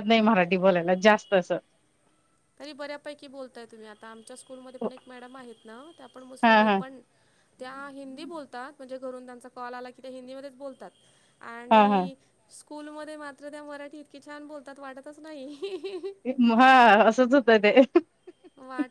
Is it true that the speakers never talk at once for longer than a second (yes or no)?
yes